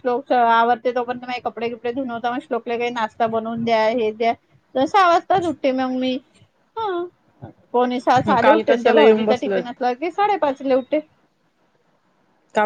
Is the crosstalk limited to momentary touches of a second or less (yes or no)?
no